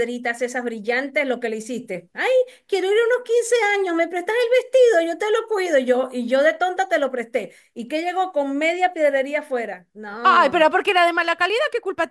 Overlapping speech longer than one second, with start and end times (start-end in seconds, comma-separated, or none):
none